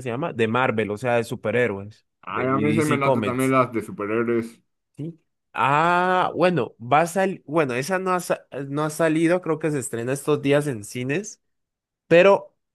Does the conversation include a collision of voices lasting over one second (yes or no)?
yes